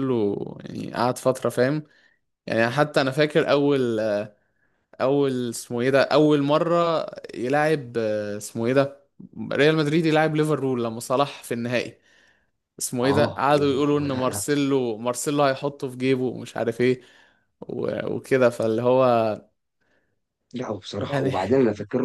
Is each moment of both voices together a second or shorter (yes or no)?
no